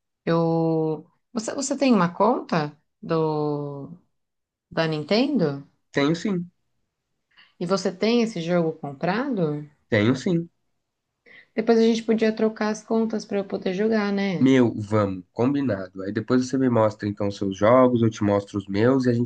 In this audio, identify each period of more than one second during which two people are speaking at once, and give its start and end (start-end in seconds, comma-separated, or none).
none